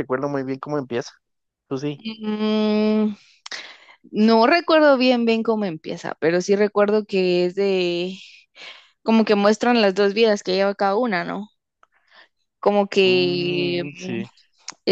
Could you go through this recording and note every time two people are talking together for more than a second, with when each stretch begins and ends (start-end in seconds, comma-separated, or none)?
13.0-14.2